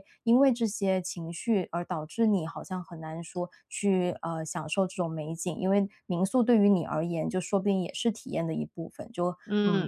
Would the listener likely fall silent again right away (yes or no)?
no